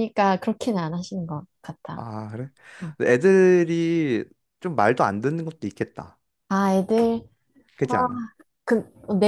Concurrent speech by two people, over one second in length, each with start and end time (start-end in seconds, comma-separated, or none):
none